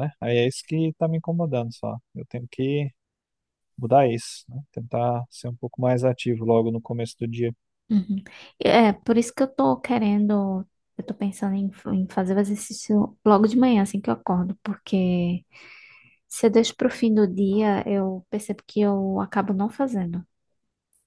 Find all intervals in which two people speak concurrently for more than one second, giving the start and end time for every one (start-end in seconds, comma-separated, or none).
none